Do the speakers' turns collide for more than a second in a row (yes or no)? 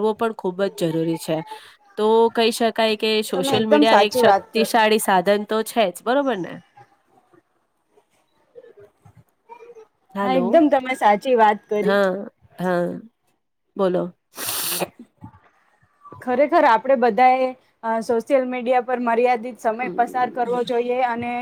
yes